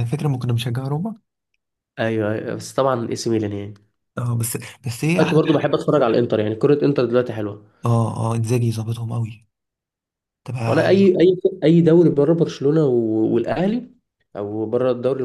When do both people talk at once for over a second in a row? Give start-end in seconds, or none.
none